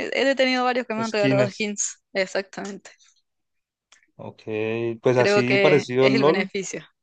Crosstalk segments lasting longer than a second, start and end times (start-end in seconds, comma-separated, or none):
5.2-6.5